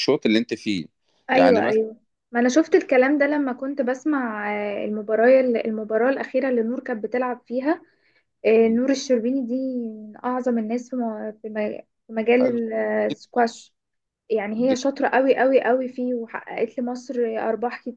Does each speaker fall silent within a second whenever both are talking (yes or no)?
yes